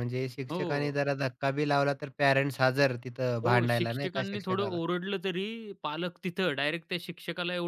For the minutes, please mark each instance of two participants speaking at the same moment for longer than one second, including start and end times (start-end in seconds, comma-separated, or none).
3.4-4.8